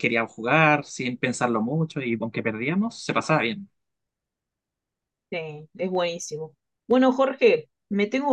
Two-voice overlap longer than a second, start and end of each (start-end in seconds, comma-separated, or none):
none